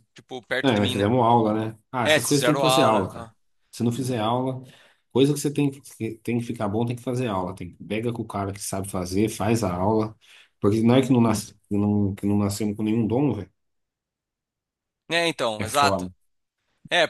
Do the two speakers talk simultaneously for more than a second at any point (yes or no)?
yes